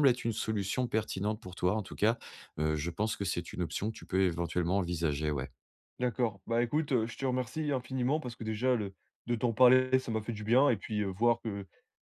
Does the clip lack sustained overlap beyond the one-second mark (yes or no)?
yes